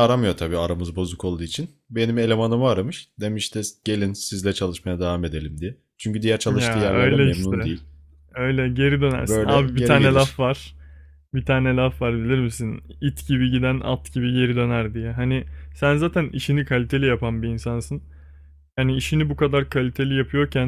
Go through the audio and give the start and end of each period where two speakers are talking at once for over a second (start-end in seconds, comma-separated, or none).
6.5-7.7, 9.2-10.4